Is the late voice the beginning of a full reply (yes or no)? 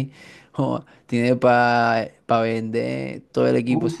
yes